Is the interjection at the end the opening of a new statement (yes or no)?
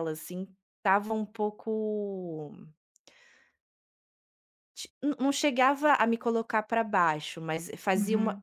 no